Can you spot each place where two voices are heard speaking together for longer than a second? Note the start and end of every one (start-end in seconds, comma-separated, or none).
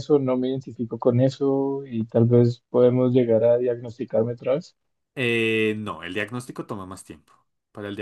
none